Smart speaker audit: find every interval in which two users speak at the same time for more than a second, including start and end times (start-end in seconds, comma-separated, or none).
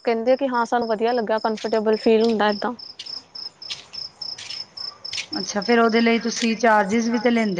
none